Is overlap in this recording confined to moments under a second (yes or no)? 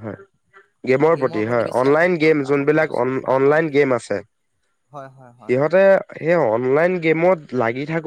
no